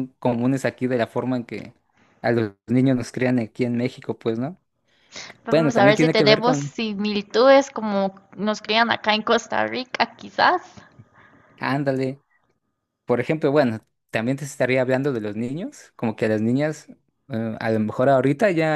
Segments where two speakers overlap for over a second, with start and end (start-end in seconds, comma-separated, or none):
5.5-6.8